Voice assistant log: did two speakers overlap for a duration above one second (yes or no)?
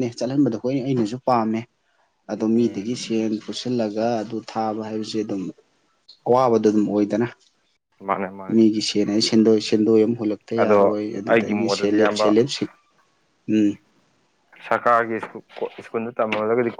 yes